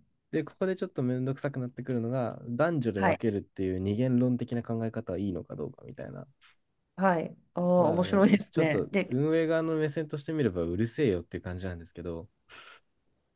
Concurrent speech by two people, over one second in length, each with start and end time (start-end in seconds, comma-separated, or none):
7.8-9.2